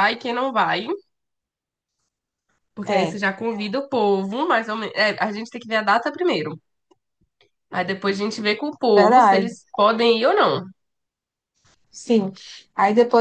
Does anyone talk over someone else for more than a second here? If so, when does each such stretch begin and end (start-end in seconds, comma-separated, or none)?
none